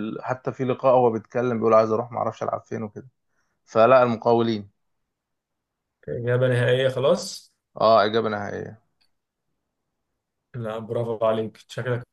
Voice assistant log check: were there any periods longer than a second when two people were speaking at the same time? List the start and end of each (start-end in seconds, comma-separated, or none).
none